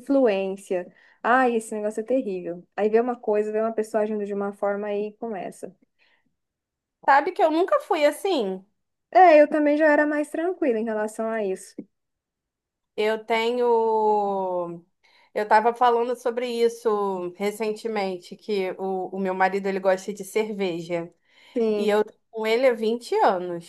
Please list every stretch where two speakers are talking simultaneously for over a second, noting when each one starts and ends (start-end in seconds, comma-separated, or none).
none